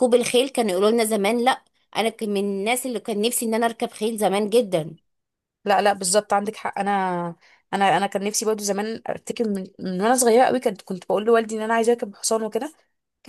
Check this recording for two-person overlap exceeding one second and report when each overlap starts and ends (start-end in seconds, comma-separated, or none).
none